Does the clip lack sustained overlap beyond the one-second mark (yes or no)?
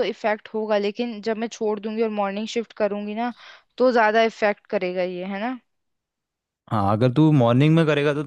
yes